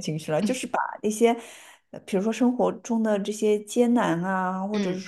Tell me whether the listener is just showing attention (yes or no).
yes